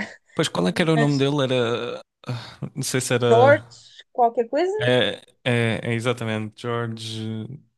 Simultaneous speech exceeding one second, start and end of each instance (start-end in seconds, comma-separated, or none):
none